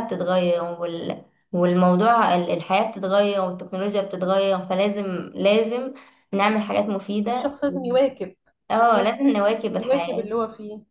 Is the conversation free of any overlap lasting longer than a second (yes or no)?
no